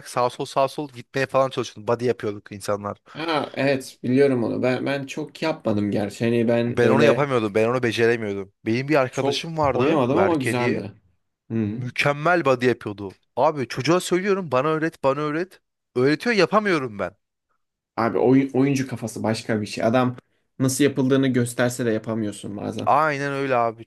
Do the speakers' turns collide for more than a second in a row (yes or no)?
yes